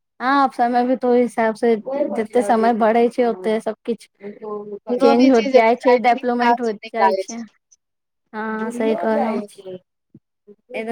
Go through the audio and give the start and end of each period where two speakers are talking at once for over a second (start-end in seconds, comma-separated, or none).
4.9-7.2